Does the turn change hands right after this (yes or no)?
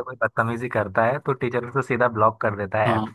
yes